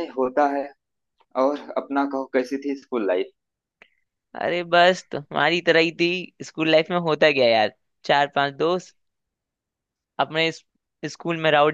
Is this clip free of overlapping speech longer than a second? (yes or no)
yes